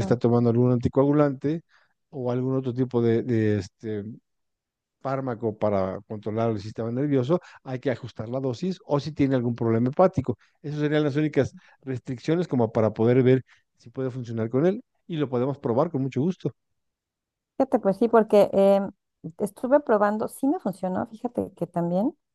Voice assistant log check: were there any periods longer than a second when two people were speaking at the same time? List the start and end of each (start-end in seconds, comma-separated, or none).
none